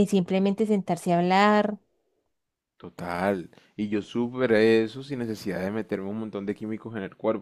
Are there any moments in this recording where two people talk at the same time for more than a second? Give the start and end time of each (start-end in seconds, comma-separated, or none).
none